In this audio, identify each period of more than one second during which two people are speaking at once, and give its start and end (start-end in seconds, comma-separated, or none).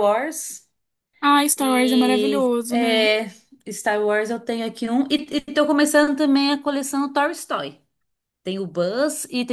1.6-3.1